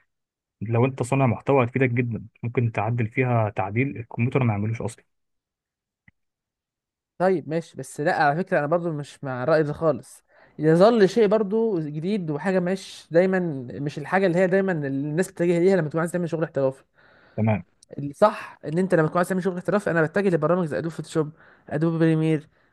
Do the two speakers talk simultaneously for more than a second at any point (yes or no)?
no